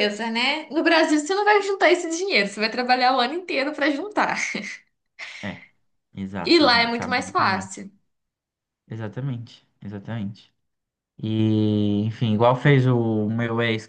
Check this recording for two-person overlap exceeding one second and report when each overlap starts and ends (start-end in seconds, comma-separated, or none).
6.4-7.7